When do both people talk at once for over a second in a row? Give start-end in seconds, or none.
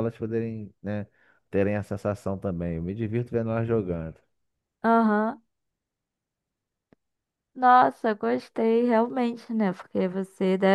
none